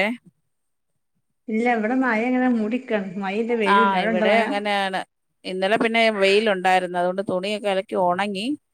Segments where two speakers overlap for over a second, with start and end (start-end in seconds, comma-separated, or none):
none